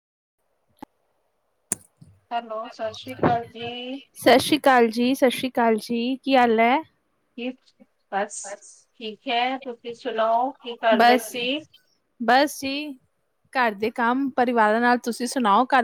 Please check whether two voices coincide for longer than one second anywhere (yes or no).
no